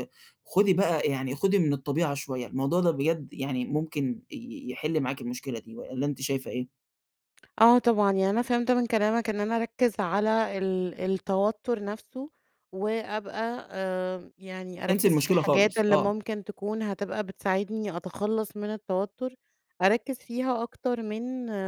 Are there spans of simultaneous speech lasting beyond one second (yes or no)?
yes